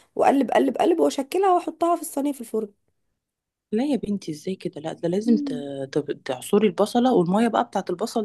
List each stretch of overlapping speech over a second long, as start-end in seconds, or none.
none